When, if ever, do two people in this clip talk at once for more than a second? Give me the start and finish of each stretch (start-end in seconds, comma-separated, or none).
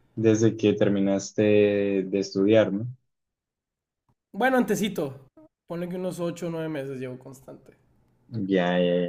none